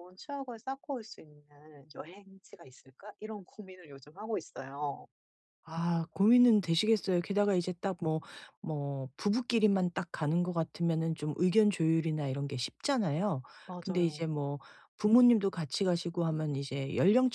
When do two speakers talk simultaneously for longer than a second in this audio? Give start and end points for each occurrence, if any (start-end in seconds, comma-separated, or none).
none